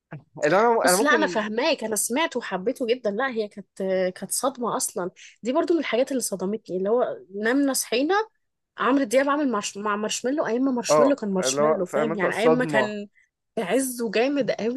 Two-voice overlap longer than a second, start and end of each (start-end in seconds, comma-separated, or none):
10.9-12.9